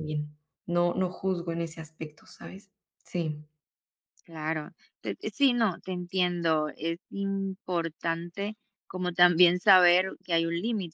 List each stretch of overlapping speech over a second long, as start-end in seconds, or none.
none